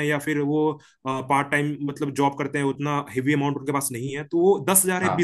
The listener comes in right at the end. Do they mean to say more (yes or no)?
no